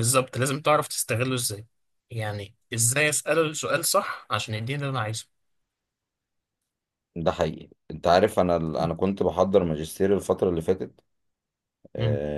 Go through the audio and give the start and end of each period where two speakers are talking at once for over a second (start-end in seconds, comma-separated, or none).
none